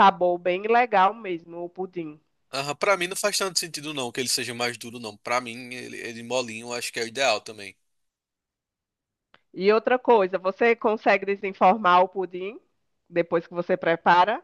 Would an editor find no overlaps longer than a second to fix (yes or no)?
yes